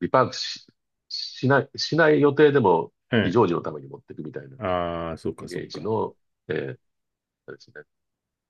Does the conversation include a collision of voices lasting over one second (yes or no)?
no